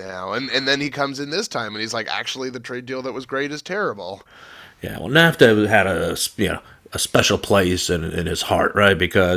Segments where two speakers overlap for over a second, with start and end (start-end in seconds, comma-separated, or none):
none